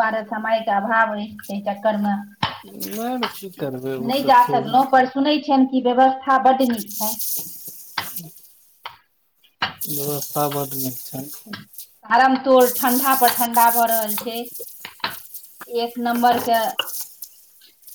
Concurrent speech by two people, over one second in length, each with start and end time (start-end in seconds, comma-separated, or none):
none